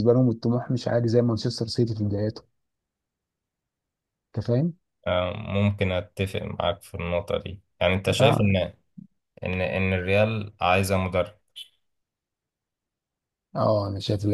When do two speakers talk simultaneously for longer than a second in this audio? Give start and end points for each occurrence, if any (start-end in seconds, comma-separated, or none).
none